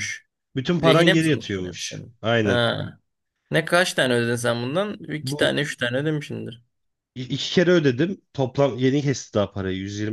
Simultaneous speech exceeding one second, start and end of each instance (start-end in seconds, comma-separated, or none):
0.8-2.6